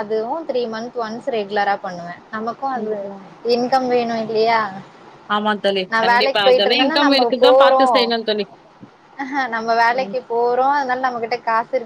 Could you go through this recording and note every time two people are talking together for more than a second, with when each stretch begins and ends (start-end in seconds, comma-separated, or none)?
5.9-7.8